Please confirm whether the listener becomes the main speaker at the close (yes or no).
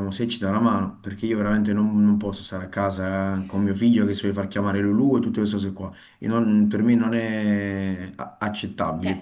yes